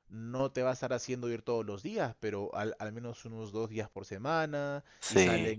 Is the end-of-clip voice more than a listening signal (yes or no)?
no